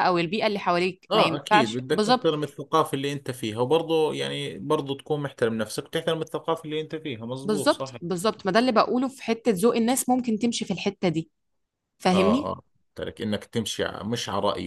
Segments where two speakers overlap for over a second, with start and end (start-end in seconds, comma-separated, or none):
1.1-2.3